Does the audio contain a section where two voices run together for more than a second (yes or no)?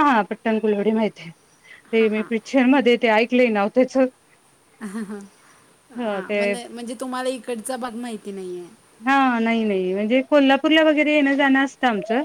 no